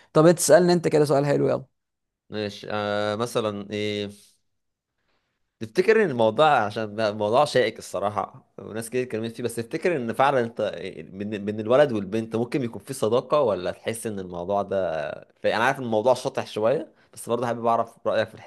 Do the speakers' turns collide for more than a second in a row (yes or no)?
no